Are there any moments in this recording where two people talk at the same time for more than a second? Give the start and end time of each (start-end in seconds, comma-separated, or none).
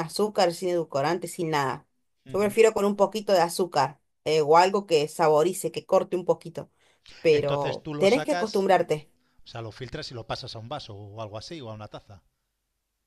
7.3-8.7